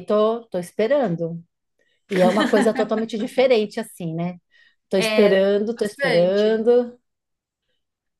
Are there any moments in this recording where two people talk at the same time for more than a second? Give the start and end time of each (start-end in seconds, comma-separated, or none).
5.0-6.7